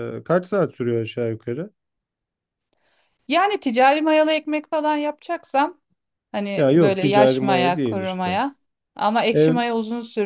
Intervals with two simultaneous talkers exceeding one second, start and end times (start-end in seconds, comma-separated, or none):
6.6-8.4